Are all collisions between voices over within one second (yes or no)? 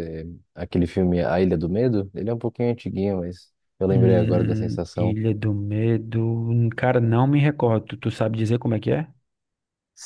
no